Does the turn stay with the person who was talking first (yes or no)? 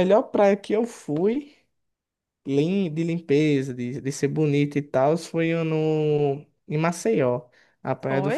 yes